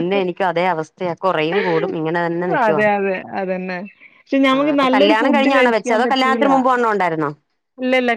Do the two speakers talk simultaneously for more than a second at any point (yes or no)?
yes